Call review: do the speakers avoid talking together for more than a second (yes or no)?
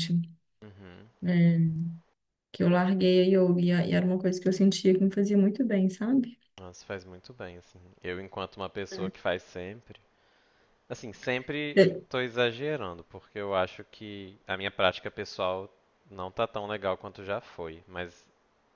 yes